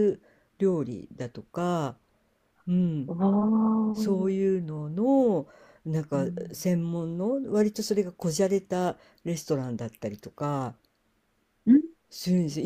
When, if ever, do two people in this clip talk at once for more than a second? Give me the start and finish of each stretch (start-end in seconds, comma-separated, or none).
none